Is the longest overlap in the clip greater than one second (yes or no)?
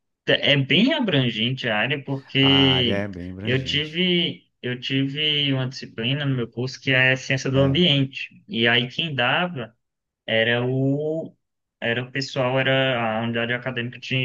yes